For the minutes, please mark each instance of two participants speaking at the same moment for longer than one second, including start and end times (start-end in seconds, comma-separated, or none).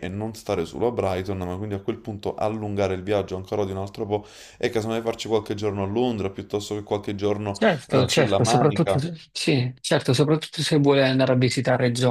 7.6-9.0